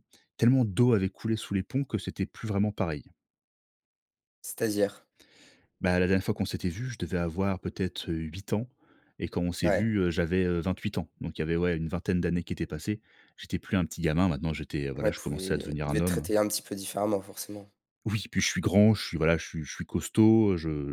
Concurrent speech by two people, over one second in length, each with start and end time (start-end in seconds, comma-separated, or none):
14.9-16.3